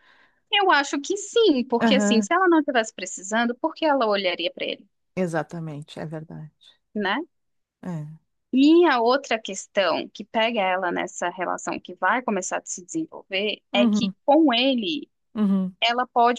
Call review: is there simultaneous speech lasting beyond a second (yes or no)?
no